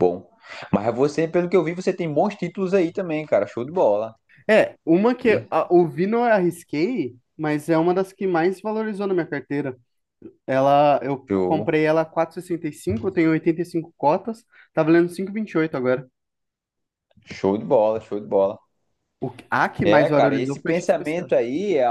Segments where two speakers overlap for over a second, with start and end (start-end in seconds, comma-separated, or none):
19.8-21.3